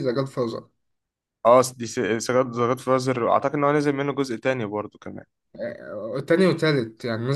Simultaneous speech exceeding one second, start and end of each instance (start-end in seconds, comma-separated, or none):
none